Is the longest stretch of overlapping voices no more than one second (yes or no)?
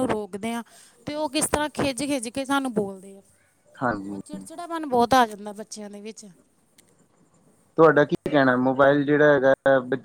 yes